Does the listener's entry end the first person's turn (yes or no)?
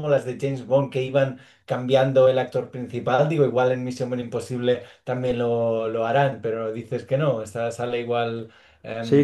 yes